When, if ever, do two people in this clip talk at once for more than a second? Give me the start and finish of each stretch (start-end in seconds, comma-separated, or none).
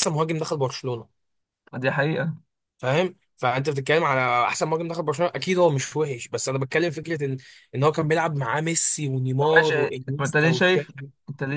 9.4-10.9